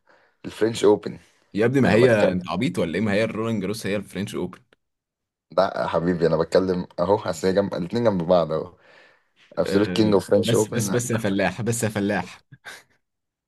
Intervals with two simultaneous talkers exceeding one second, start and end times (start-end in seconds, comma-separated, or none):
9.7-11.0